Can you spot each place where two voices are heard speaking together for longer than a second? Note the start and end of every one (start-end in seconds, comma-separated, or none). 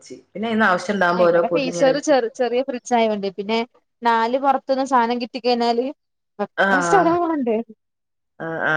none